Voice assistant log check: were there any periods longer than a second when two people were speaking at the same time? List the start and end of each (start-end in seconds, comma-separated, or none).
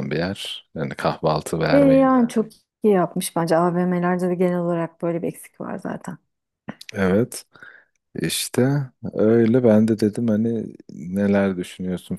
none